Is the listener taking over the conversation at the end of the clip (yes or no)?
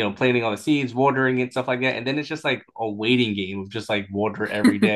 no